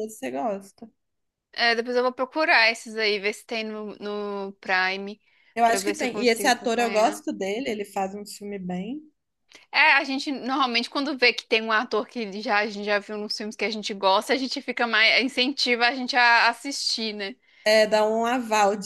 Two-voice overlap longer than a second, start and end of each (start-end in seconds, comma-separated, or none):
5.6-7.2